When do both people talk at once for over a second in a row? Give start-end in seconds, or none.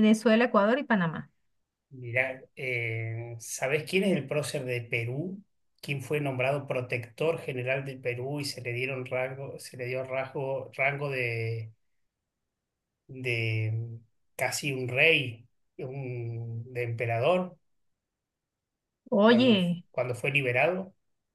none